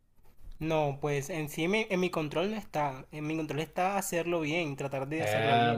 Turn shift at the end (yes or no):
yes